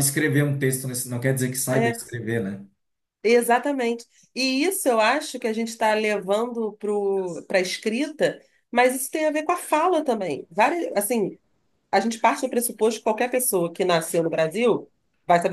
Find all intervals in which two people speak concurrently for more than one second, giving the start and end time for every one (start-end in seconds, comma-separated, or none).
none